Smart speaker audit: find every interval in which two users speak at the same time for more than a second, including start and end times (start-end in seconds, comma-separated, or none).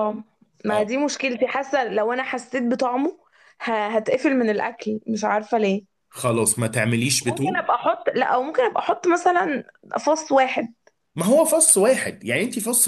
none